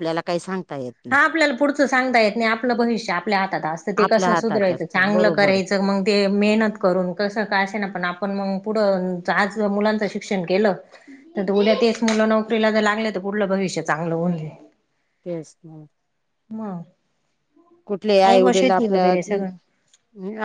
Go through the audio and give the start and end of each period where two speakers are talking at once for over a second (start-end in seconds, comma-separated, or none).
4.0-5.6